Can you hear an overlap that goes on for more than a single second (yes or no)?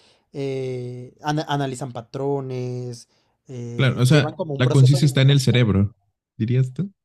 yes